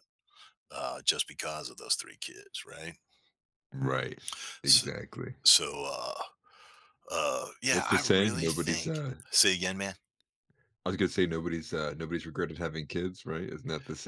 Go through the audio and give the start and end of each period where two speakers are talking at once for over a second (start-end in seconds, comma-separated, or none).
7.7-9.2